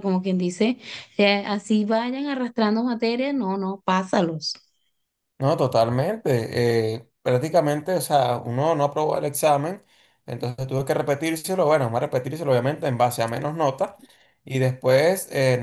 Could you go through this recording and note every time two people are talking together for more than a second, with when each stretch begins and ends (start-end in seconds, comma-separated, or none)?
none